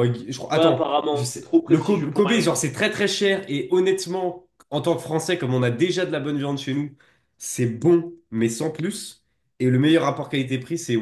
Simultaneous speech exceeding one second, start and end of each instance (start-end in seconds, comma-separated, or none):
0.5-2.5